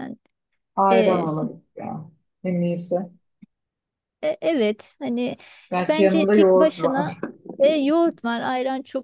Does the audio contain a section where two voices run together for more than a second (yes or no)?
yes